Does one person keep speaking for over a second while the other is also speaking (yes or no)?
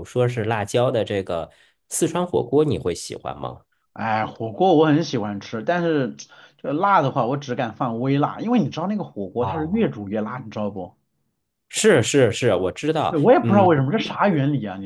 no